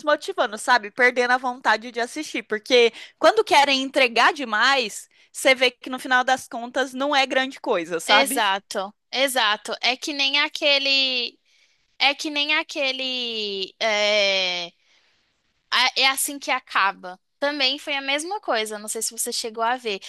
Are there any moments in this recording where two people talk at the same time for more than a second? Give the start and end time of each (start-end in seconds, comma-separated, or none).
none